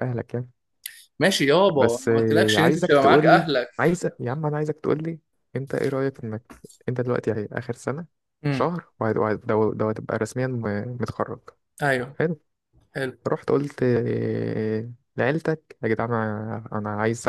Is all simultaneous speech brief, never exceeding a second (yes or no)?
no